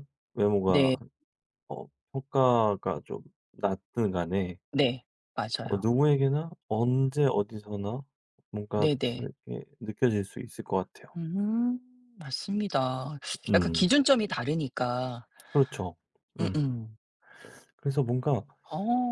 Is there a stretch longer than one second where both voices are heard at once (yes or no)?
no